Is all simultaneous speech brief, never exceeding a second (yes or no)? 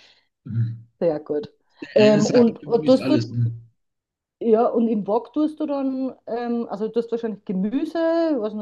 no